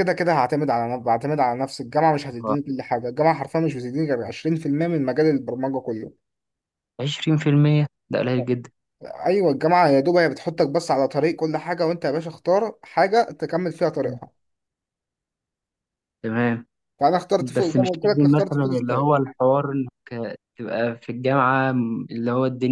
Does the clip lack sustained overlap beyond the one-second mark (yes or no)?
no